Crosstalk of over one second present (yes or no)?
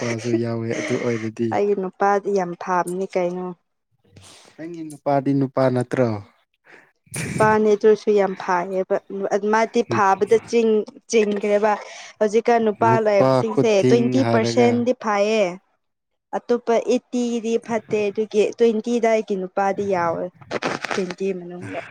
yes